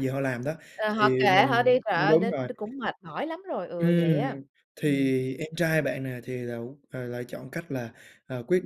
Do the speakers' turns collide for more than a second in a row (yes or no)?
yes